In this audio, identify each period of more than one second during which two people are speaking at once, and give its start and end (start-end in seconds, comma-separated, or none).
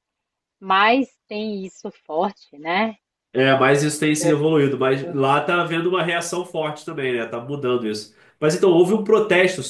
4.2-5.4